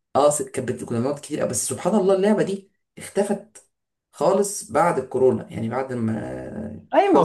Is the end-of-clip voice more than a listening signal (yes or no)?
yes